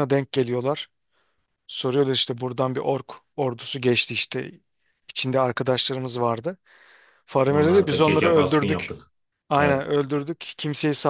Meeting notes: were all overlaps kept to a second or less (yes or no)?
no